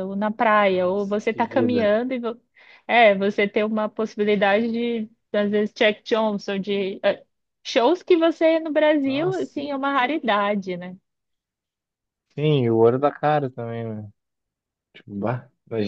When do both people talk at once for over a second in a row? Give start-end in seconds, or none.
0.7-1.9